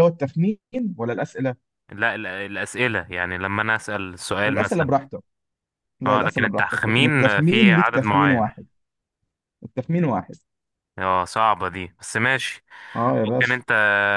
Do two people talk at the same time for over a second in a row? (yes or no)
yes